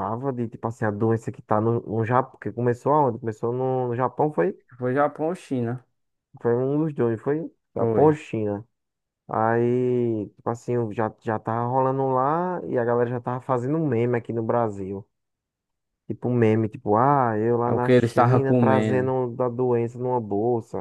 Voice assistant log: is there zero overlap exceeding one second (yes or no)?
no